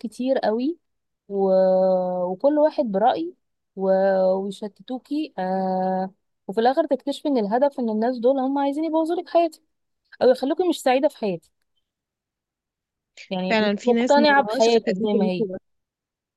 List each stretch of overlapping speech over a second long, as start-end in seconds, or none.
13.5-15.5